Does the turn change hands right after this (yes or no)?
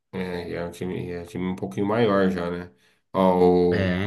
no